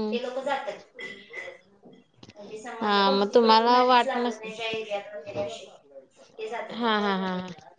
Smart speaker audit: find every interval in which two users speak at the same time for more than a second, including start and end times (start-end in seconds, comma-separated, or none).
2.8-4.4